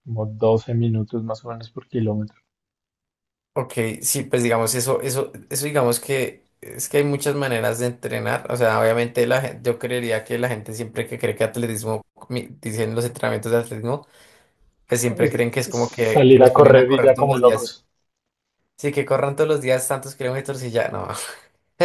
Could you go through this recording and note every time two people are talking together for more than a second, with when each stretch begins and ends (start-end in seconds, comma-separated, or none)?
16.1-17.8